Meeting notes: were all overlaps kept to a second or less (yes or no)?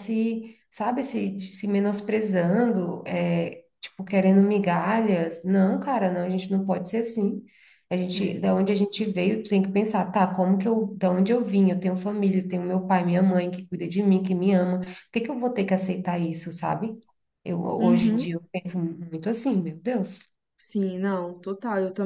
yes